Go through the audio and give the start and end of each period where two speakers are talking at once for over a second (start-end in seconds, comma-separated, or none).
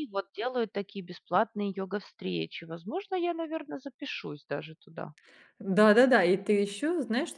none